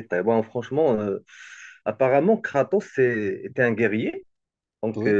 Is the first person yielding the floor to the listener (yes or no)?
no